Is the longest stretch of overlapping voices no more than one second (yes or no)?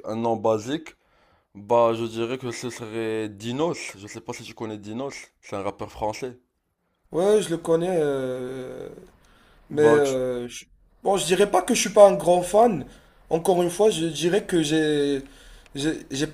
yes